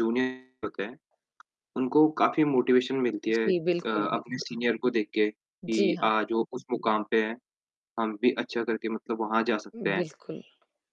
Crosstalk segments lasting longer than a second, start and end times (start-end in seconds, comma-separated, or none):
3.3-4.6